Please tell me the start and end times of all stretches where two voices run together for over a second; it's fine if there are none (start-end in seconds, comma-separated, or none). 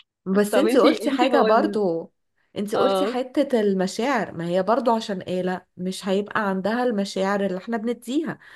0.5-1.8